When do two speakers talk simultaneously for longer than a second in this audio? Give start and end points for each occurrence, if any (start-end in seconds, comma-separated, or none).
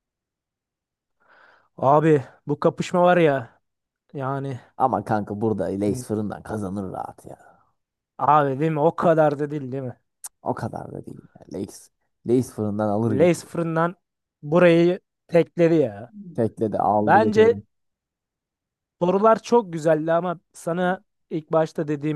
none